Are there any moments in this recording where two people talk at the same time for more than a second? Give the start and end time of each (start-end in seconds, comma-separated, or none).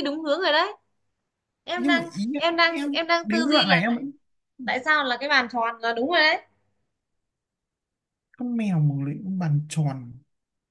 1.7-4.0